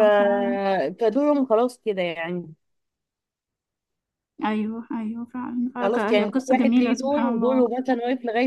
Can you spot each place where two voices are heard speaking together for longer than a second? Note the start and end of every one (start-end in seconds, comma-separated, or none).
5.8-7.7